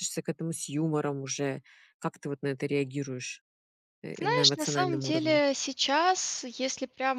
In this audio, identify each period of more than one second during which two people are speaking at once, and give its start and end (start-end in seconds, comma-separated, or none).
4.2-5.4